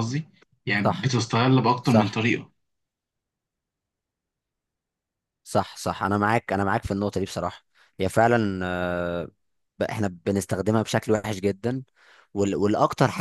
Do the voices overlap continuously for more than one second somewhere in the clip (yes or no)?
no